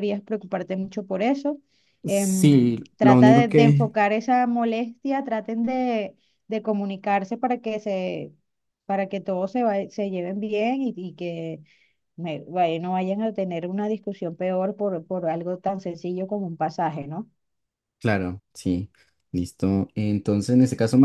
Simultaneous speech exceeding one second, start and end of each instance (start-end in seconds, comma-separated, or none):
2.0-3.9